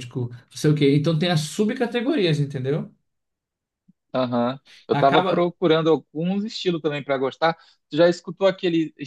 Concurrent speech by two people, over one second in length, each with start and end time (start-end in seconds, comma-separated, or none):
none